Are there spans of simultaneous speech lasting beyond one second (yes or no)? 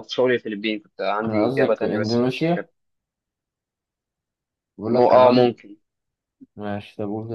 yes